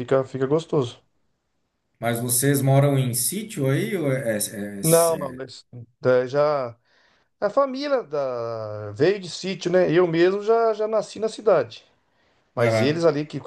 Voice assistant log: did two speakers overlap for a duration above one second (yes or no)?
no